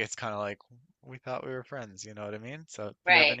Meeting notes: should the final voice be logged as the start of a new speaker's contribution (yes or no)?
no